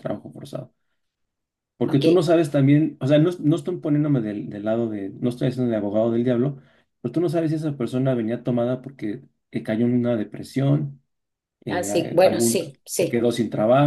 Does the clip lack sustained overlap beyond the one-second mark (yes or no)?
no